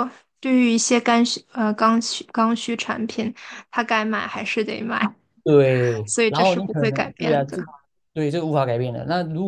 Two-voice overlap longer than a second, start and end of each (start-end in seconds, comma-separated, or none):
6.1-7.6